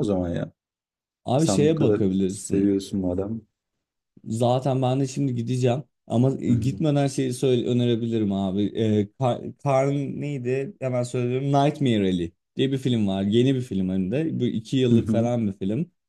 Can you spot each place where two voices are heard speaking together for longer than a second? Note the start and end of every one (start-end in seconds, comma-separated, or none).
1.4-2.7